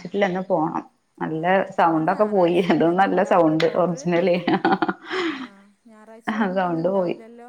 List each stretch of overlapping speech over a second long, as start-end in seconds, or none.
1.4-4.1